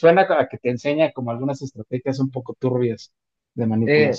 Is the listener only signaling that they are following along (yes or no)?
no